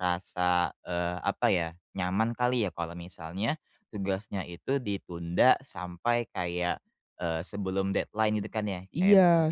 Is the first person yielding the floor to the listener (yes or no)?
no